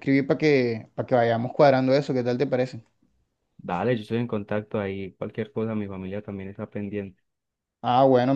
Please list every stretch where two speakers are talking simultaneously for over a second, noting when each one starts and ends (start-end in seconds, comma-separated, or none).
none